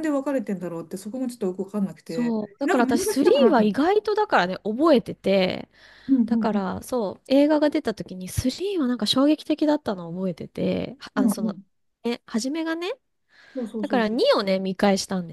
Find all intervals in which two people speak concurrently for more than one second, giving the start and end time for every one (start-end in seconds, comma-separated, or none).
2.0-3.8